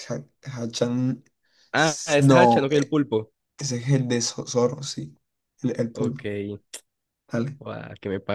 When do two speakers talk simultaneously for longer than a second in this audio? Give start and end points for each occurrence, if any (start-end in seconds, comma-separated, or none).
1.8-3.0